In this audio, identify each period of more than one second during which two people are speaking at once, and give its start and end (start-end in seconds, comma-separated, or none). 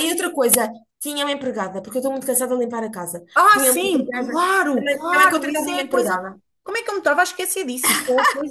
3.3-6.2